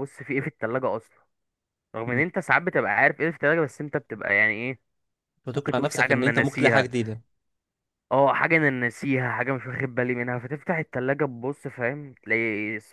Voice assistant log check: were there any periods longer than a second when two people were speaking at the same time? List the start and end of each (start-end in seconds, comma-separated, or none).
5.5-6.9